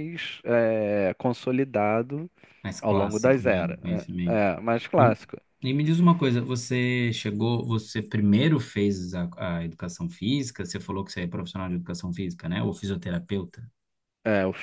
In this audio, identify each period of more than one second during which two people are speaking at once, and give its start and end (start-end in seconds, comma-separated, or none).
2.8-4.0